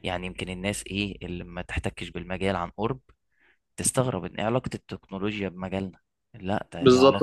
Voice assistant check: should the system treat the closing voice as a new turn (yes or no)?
yes